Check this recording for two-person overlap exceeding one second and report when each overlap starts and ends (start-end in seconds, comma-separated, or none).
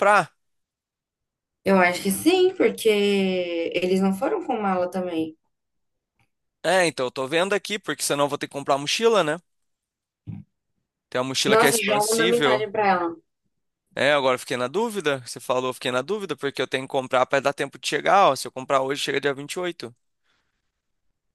11.4-12.7